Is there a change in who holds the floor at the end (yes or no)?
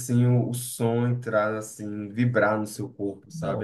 yes